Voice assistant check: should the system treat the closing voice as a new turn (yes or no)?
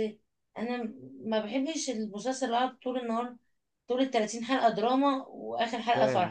yes